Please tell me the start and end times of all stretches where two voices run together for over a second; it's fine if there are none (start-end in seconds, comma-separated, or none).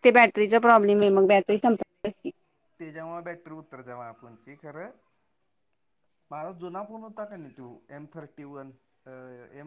none